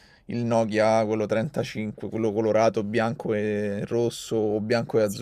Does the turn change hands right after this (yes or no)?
yes